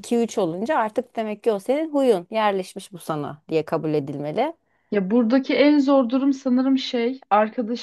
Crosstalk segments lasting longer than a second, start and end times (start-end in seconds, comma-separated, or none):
none